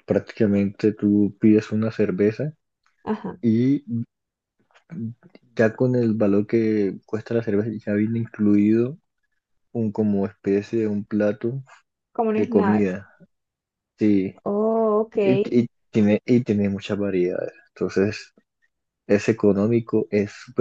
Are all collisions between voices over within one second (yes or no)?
yes